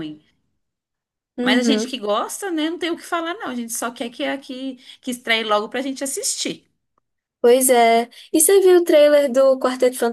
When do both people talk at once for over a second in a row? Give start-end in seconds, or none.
none